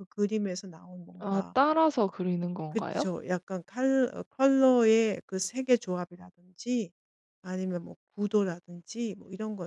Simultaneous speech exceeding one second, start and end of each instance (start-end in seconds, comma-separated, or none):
none